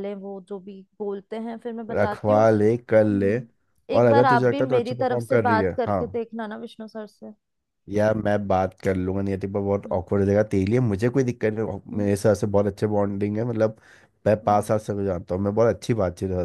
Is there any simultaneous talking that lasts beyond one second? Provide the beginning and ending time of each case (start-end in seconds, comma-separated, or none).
4.0-6.0